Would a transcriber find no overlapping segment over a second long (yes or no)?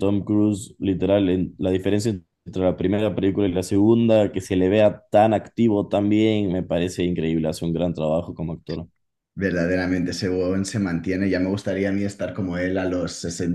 yes